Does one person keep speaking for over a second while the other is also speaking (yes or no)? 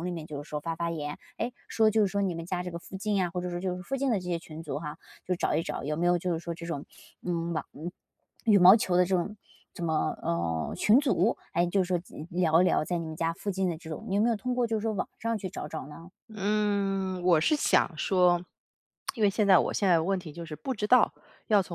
no